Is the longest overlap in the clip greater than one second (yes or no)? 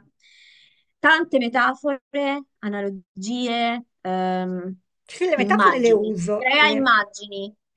yes